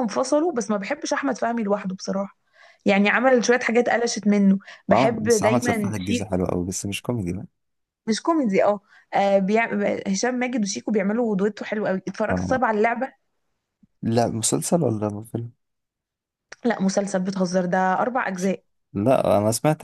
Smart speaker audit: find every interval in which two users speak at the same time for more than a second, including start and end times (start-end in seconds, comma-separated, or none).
4.9-6.4